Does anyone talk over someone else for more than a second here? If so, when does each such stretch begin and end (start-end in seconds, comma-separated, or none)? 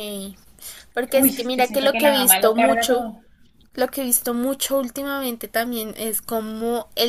1.1-3.0